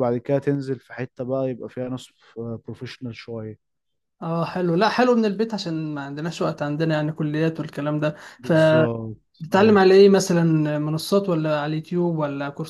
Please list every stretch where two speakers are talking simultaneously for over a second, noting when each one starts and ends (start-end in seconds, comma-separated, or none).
8.4-9.9